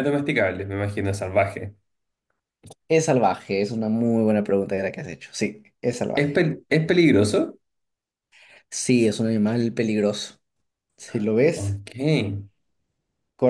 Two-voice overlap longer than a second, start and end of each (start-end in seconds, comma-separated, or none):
none